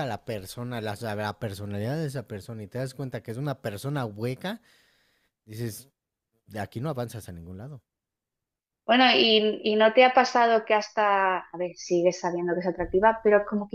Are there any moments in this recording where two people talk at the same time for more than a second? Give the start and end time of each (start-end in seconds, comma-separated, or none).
none